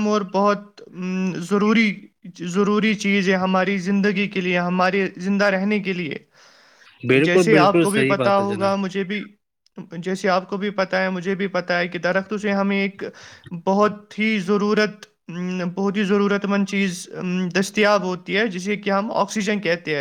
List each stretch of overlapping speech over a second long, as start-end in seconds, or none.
7.1-8.8